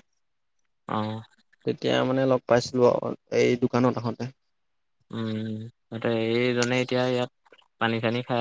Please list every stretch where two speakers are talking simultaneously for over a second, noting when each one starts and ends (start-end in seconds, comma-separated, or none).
none